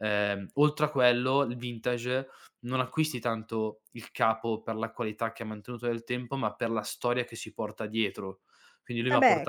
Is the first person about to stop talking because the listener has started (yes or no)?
yes